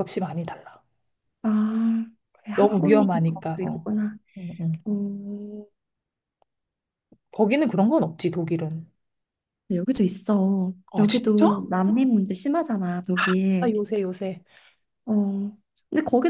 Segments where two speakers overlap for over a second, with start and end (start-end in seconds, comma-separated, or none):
2.5-3.9